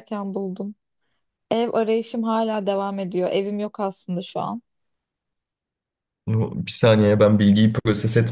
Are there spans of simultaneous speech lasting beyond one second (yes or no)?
no